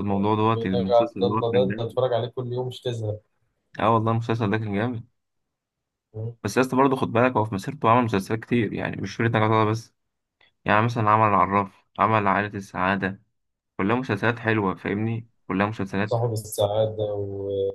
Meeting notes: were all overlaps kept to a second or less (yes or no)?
no